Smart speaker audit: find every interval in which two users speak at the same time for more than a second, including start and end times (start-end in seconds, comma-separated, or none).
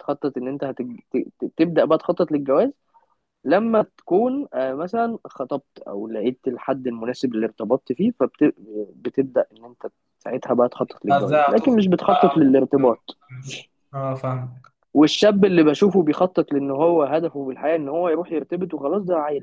11.1-12.4